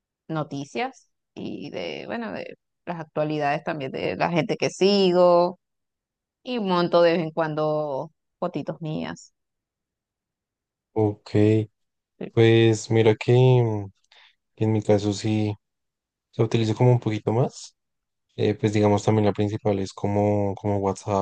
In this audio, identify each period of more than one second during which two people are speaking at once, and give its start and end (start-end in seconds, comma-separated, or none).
none